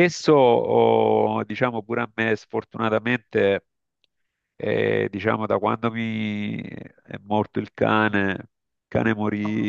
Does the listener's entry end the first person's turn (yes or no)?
no